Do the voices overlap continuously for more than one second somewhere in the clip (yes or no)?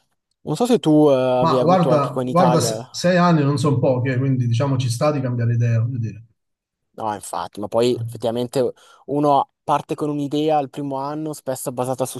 yes